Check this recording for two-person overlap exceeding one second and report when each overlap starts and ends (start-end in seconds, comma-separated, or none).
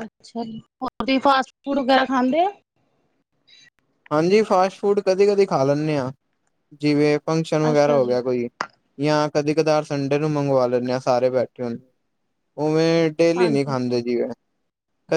none